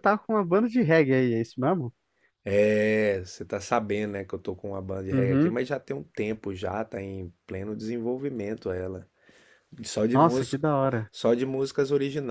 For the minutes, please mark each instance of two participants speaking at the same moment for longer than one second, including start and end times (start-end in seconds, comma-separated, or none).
none